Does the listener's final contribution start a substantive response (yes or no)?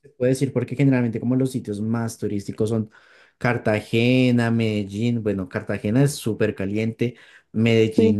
no